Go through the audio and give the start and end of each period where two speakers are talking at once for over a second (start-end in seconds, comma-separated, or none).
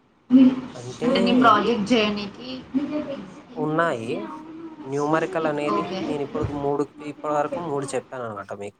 none